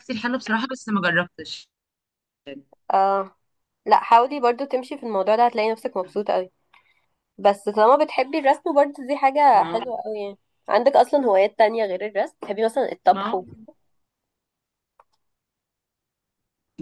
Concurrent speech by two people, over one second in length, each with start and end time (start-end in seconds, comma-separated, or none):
none